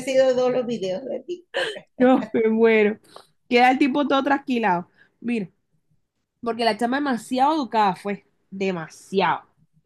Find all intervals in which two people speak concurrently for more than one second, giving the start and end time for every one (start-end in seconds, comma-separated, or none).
none